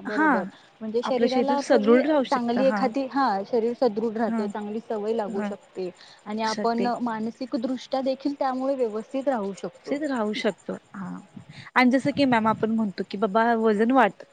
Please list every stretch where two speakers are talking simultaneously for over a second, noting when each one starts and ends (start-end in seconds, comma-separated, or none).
1.1-2.8